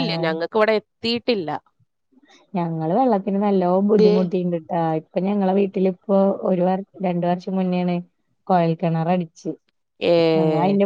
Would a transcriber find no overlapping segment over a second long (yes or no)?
yes